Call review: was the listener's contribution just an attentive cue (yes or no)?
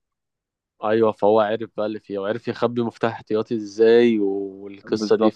no